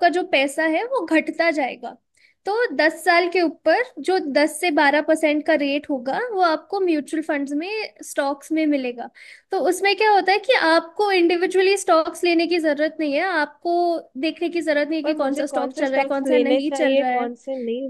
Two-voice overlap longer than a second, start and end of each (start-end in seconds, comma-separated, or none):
15.0-17.3